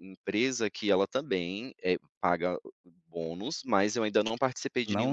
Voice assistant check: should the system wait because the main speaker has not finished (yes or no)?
no